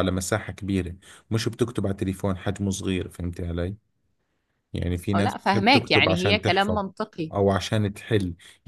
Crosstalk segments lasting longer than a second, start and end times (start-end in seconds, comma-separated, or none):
5.1-6.8